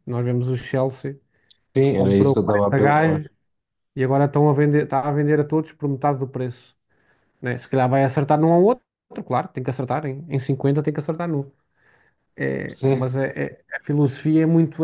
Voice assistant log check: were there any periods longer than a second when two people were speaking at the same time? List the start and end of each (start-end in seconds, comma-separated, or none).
1.9-3.2